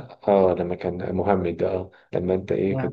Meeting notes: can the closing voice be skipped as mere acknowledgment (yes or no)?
yes